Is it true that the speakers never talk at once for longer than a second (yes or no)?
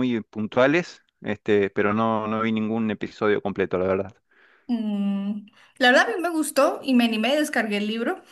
yes